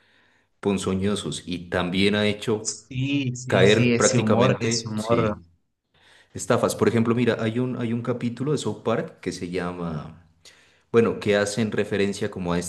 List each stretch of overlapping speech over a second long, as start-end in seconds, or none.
3.5-5.4